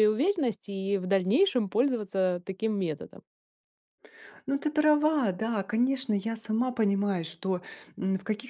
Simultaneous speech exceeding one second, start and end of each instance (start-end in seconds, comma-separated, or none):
none